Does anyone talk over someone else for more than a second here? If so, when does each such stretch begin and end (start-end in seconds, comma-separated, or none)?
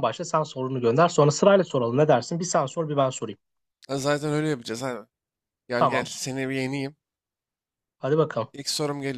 none